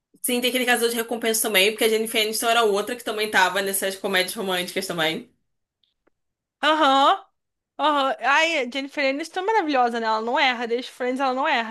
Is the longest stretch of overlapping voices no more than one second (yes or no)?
yes